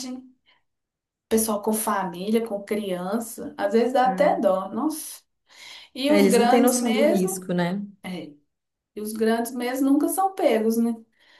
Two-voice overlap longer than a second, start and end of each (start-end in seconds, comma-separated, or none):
6.1-7.5